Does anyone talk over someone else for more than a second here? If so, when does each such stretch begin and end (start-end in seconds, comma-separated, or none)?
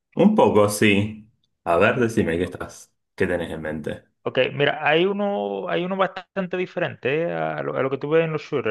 none